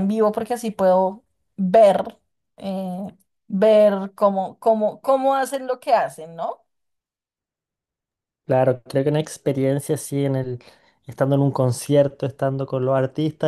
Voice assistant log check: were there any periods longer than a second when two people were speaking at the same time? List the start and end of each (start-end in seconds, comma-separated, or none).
none